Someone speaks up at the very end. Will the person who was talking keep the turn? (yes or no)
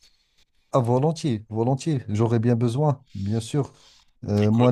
yes